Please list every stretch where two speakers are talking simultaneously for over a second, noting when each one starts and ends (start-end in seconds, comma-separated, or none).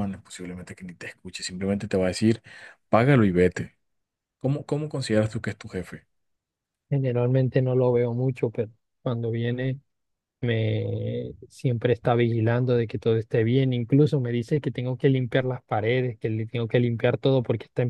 none